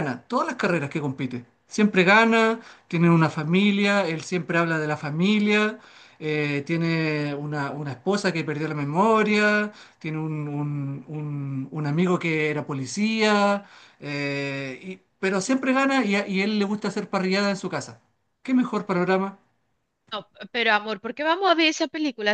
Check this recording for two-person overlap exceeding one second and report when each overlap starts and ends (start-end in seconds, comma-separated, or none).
none